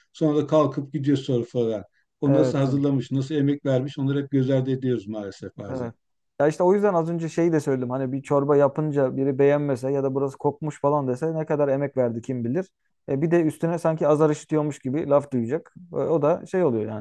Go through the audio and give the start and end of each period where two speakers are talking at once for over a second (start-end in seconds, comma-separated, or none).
none